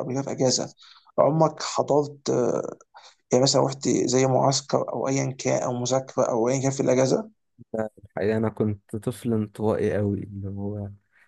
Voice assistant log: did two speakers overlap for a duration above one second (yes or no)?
no